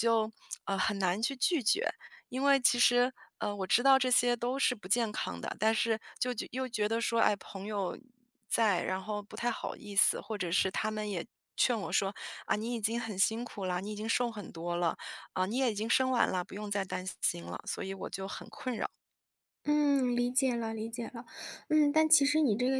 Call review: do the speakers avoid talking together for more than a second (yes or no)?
yes